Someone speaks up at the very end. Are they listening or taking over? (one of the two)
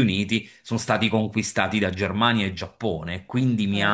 listening